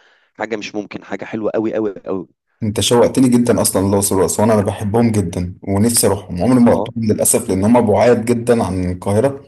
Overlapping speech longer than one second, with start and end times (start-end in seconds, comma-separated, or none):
none